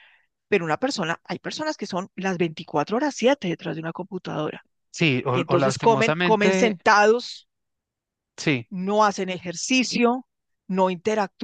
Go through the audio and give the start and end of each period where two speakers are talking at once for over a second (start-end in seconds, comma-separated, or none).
5.3-6.8